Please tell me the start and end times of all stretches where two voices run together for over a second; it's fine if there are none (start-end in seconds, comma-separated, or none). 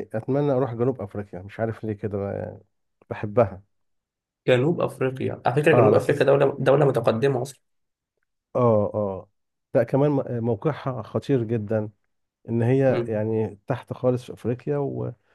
none